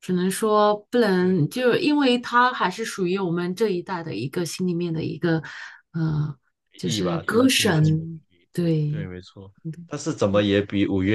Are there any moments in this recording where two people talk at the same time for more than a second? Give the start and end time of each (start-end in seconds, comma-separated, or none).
6.8-9.1